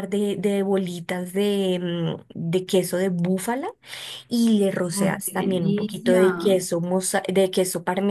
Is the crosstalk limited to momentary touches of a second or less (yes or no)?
no